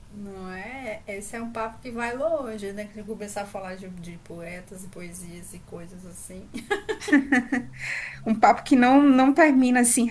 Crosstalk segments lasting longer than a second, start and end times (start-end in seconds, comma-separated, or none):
none